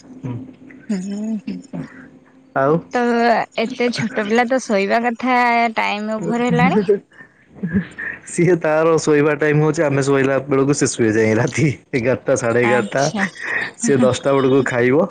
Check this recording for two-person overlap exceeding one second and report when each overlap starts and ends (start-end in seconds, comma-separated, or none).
none